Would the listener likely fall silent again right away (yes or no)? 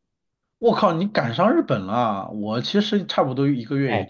no